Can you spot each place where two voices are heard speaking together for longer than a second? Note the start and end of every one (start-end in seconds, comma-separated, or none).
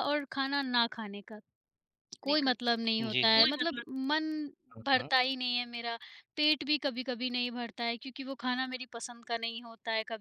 2.2-3.5